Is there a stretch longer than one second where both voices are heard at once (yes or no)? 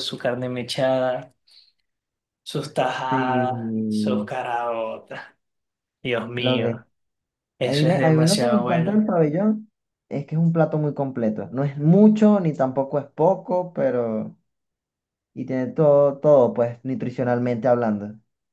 yes